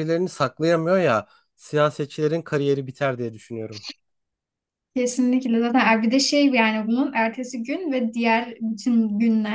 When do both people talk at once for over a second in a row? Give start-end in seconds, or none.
none